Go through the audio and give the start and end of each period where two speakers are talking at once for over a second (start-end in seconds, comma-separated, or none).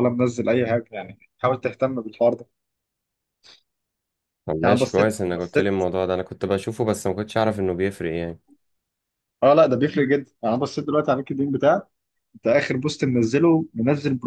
4.6-5.8